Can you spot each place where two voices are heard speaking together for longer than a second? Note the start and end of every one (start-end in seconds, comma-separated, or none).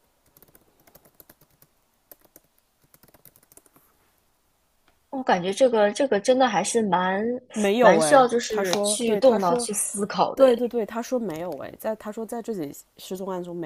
7.8-9.7